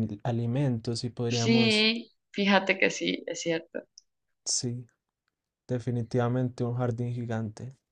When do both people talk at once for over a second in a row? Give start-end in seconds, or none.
none